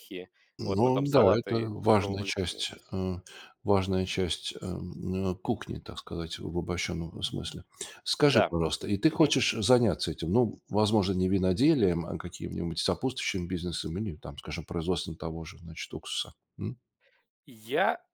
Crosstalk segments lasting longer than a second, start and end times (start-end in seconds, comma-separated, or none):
0.6-2.6